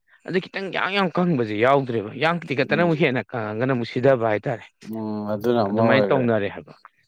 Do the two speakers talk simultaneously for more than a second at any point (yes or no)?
no